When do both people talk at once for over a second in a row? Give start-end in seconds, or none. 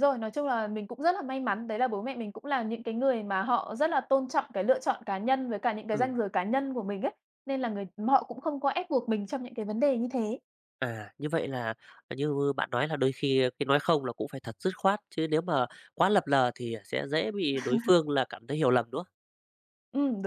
none